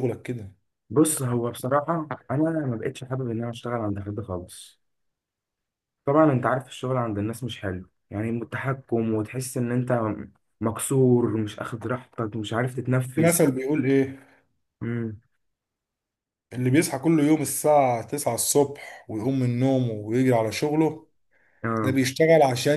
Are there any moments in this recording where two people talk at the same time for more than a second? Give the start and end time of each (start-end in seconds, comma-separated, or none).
none